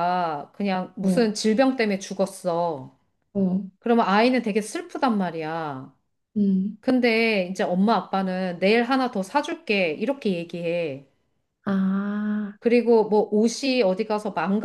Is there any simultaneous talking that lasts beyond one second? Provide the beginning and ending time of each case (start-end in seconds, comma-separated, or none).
none